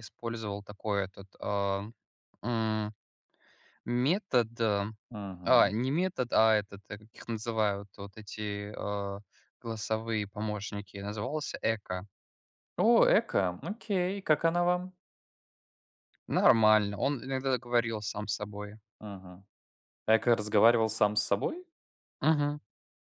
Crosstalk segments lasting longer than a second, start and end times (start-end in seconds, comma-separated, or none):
none